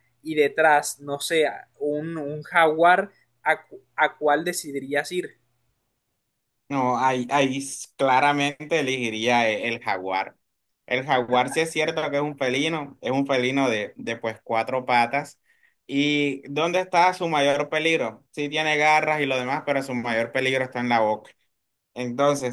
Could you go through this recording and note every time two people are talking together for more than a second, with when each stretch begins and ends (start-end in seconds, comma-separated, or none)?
none